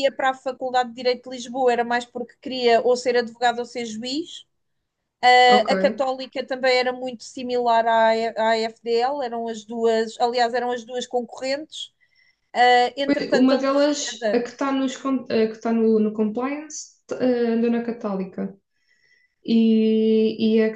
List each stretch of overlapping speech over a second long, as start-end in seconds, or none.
13.1-14.4